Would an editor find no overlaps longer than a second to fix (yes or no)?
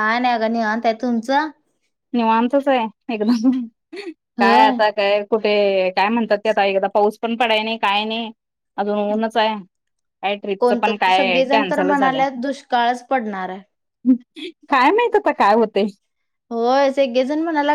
no